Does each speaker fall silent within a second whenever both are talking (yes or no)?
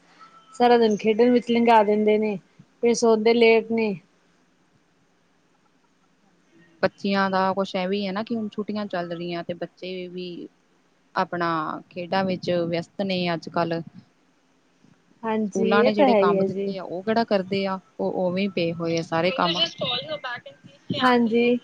no